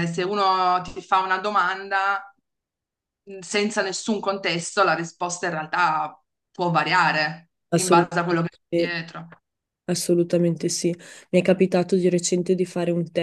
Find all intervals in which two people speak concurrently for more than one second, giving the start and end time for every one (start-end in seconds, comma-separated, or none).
7.7-9.0